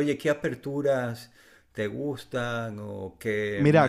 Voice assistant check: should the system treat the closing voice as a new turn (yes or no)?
yes